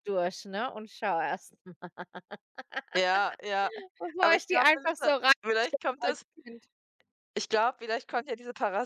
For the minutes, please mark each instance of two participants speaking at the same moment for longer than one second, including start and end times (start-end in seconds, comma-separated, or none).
none